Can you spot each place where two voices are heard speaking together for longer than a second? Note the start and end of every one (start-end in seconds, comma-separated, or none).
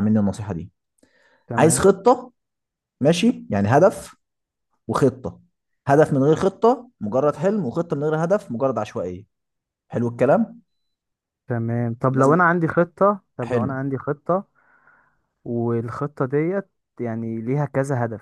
none